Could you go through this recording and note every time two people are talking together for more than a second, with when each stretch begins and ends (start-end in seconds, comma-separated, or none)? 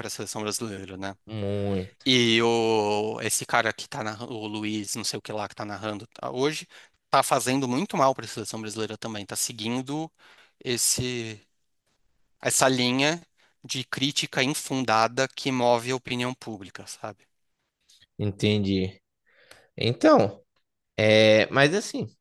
none